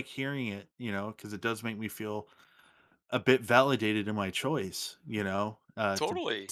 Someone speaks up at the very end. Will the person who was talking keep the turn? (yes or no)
yes